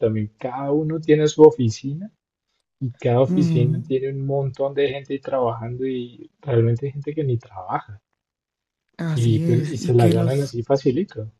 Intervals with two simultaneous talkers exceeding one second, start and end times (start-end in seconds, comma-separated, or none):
9.1-10.6